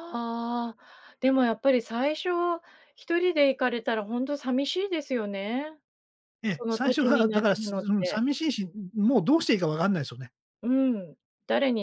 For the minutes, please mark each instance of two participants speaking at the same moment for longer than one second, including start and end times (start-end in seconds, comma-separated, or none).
6.5-8.2